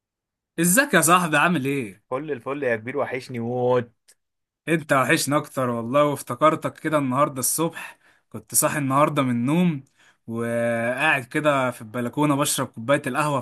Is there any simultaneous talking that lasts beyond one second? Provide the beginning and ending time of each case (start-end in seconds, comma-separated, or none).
none